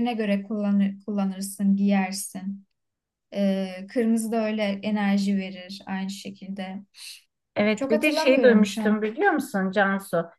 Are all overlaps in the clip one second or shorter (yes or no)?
no